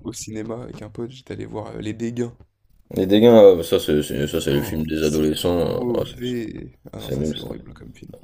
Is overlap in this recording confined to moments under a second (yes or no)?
no